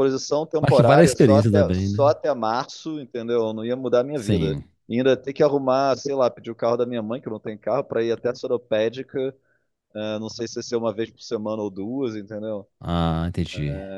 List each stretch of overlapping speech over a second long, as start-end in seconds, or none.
0.6-2.1